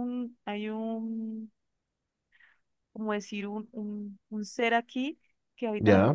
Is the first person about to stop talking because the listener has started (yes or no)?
no